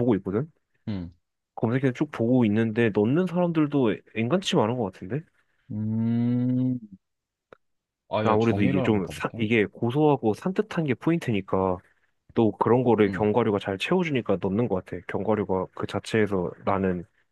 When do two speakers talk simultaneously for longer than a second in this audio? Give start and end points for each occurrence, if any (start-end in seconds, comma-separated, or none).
8.2-9.5